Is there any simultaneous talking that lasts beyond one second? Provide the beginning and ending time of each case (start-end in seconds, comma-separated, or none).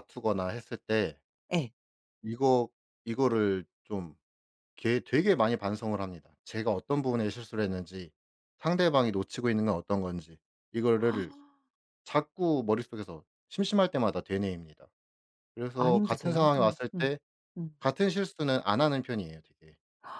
15.7-17.1